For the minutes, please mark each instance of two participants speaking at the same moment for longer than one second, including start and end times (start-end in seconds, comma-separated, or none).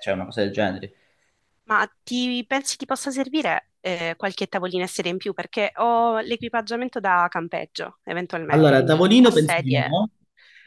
8.5-10.0